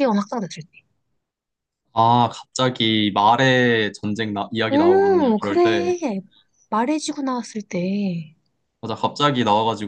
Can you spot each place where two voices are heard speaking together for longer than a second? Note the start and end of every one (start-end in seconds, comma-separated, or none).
4.7-6.0